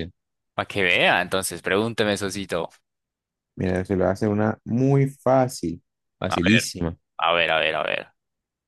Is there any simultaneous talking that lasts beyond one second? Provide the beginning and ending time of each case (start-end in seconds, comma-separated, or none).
none